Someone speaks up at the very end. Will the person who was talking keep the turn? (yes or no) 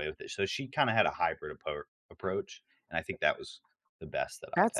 no